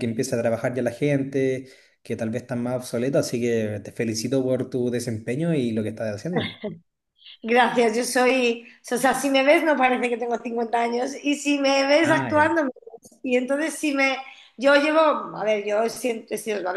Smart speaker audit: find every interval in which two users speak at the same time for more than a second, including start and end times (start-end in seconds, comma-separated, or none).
none